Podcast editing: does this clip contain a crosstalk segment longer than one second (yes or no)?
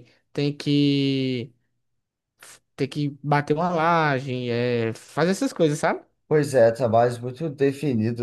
no